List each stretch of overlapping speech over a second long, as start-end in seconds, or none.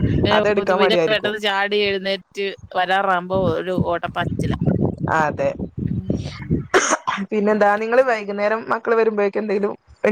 none